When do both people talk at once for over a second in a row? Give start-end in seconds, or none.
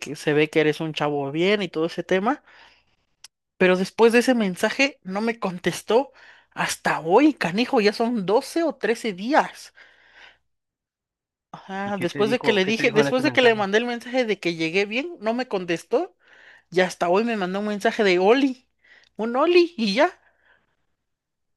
11.8-13.6